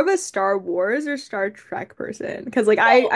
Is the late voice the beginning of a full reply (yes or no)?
no